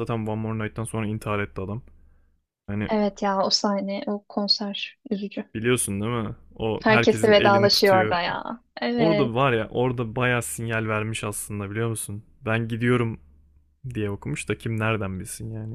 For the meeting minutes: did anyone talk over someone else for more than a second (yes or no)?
yes